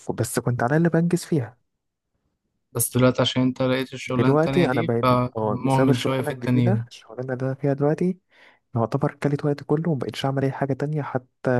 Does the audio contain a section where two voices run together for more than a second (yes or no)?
yes